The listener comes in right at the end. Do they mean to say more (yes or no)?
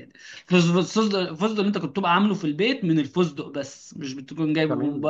yes